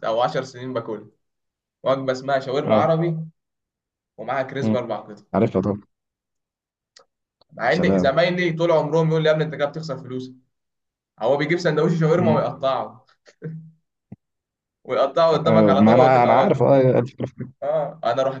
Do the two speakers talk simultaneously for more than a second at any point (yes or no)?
yes